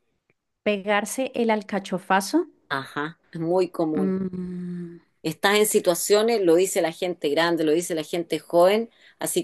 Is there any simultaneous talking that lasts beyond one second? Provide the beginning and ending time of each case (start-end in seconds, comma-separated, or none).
none